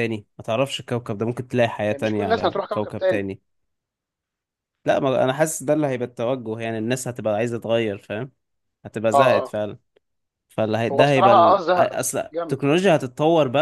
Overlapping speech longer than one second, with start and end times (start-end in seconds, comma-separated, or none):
1.8-3.2, 10.9-12.6